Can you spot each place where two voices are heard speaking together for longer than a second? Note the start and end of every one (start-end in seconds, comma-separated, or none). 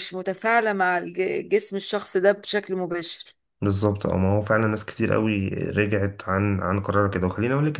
none